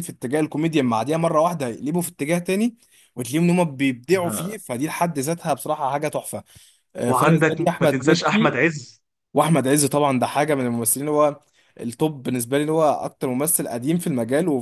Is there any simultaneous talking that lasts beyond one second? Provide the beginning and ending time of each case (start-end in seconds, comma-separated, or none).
7.0-8.6